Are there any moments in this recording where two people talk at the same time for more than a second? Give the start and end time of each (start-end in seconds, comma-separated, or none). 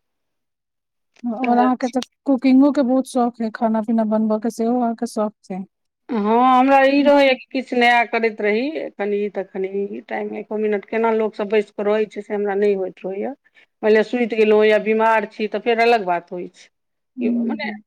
none